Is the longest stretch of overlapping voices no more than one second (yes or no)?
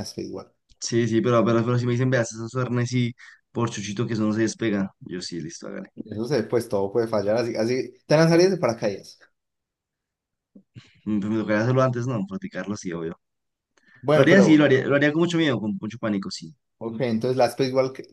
yes